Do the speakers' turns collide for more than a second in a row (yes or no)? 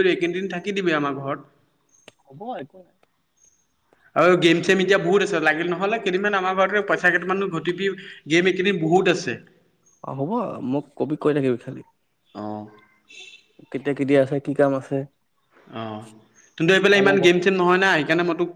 no